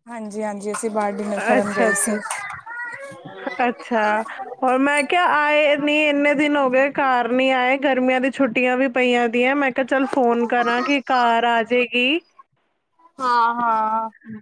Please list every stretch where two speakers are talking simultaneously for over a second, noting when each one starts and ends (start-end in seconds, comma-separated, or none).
none